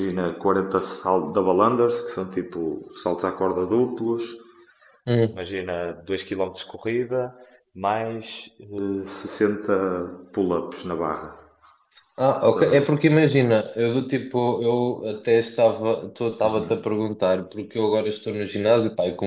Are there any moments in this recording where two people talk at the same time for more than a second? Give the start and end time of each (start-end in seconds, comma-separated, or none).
none